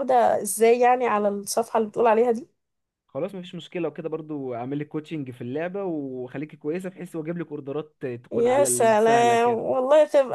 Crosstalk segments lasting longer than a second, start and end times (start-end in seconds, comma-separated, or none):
8.3-9.6